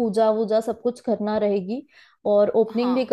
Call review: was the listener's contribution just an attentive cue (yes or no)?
yes